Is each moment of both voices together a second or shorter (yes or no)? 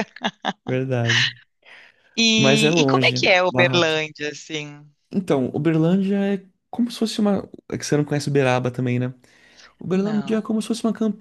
no